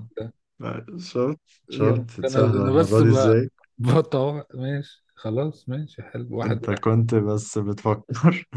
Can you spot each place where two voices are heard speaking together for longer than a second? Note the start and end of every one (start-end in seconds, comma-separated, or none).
1.7-3.3